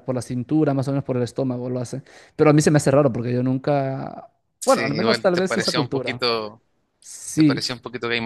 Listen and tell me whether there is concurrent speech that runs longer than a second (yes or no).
yes